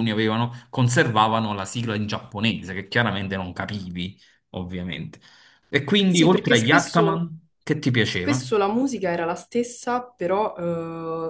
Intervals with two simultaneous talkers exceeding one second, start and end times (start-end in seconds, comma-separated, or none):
6.1-7.3